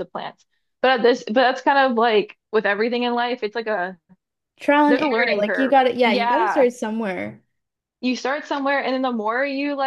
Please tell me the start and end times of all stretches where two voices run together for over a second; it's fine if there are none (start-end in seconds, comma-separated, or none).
4.9-6.7